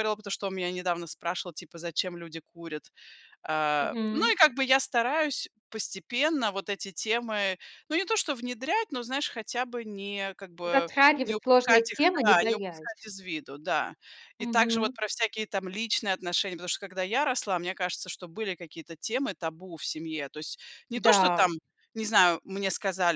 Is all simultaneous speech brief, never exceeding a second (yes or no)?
no